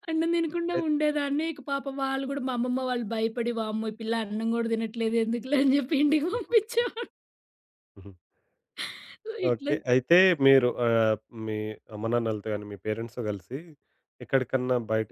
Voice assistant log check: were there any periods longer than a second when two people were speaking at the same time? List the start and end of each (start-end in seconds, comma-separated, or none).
none